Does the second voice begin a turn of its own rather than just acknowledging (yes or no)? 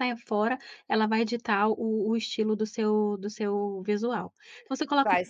no